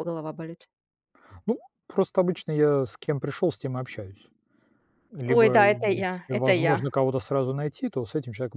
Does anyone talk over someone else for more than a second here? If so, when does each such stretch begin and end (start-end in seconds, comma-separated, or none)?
5.2-6.9